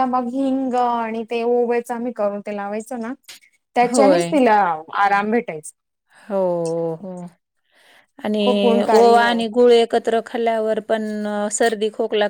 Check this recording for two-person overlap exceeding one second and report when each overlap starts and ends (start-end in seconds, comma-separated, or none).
none